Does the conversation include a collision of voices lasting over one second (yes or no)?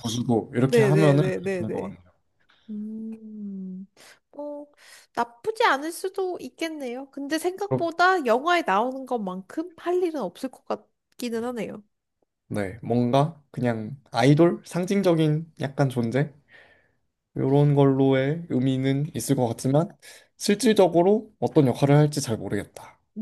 yes